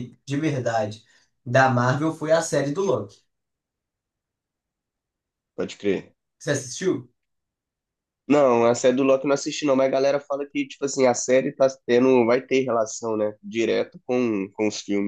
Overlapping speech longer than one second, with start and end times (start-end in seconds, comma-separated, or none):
none